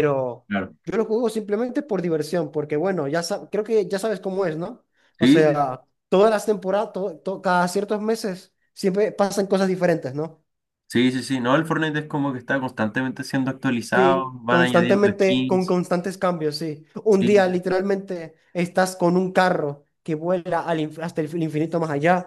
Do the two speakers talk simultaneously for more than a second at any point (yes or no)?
yes